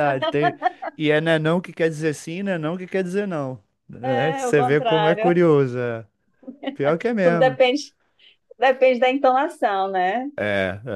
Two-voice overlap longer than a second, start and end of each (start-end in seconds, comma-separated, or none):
4.2-5.4